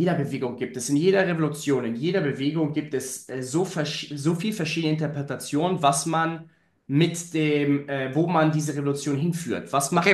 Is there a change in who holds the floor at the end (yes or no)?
yes